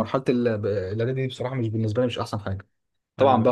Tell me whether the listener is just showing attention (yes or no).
yes